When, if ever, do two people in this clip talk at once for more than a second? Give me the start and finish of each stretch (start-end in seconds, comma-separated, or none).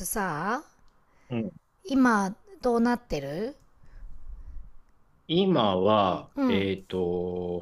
none